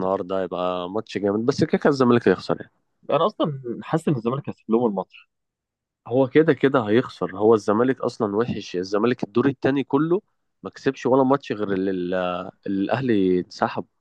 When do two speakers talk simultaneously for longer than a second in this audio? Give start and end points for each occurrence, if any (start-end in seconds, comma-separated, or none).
none